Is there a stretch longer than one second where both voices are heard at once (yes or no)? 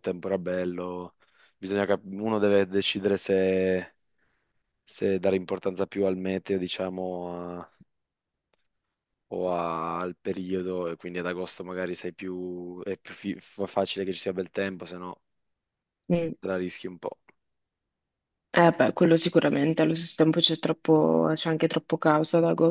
no